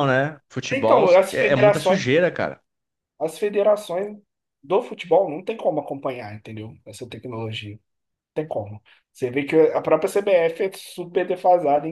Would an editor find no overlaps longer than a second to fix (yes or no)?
no